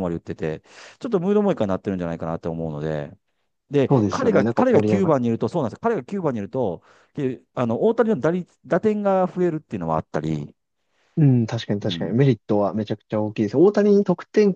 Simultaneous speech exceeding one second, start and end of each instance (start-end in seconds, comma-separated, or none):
3.9-5.2